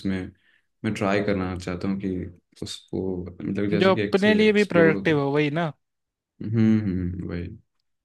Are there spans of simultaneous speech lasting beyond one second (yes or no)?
yes